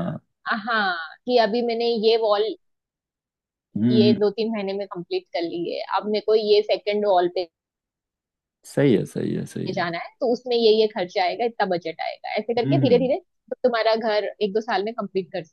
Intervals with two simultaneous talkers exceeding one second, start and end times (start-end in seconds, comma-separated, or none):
none